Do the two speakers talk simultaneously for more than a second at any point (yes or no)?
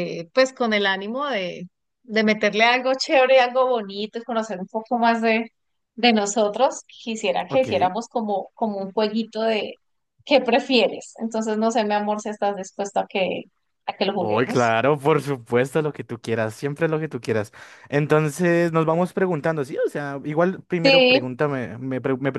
no